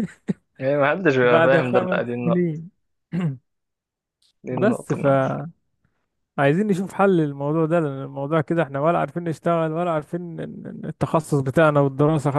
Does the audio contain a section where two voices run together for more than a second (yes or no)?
yes